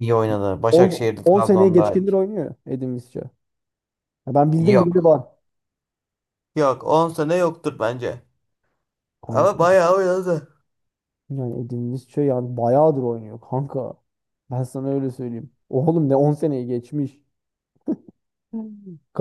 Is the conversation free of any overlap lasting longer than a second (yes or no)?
no